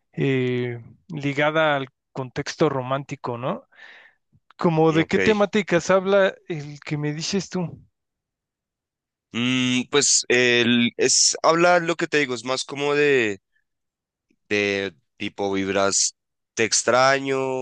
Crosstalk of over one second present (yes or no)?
no